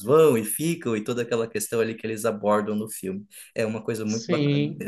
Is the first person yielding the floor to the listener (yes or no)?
yes